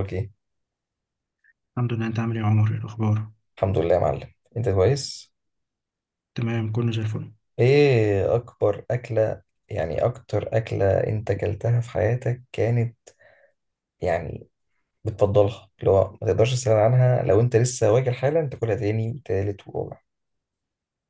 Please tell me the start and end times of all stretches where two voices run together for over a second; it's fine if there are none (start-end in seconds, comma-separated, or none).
none